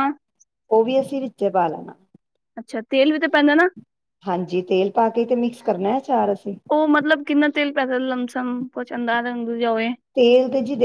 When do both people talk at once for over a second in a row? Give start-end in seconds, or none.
none